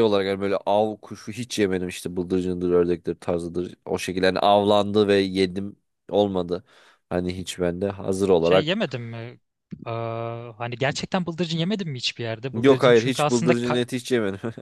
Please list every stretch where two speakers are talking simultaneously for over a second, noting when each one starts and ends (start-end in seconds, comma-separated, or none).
12.5-13.8